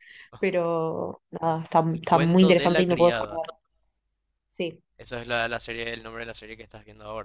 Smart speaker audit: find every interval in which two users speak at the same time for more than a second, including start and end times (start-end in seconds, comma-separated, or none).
1.9-3.4